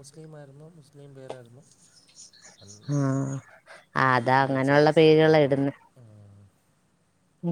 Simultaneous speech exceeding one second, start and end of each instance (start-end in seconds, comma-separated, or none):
4.1-5.7